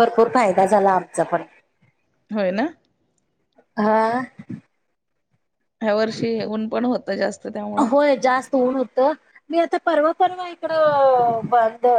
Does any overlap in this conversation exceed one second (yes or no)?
no